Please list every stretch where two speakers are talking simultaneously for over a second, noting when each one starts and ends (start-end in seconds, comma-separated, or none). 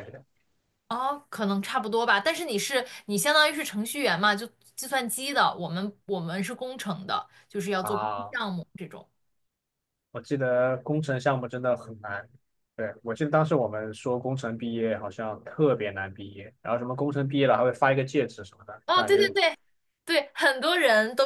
none